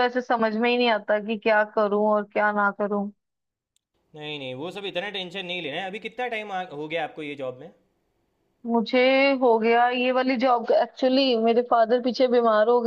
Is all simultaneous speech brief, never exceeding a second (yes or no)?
yes